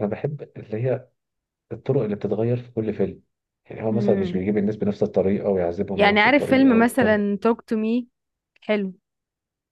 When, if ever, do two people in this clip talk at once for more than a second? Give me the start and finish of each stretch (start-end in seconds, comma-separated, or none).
6.0-7.3